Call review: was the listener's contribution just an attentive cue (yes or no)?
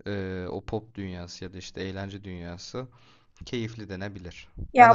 yes